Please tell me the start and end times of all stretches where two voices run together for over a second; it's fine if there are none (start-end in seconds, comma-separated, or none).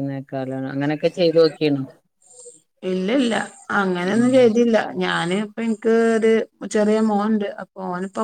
none